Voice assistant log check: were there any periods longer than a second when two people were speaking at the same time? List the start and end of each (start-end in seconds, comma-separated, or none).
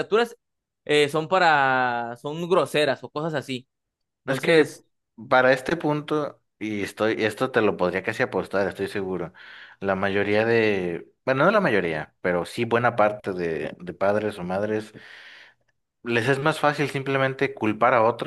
none